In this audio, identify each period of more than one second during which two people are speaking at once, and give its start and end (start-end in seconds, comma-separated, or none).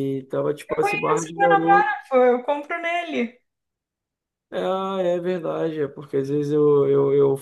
0.7-2.0